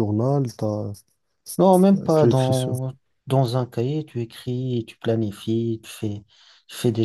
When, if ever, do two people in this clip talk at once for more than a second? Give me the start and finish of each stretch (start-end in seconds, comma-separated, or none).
none